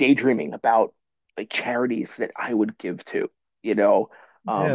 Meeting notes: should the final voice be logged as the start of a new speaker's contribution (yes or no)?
yes